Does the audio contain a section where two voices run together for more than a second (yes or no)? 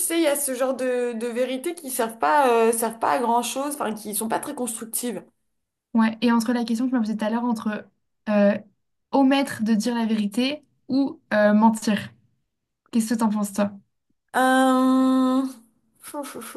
no